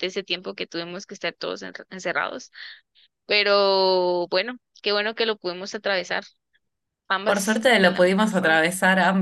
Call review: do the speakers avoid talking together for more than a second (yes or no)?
no